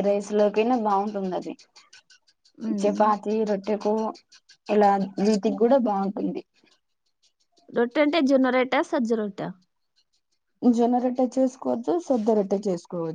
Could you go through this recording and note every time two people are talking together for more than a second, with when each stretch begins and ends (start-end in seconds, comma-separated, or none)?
none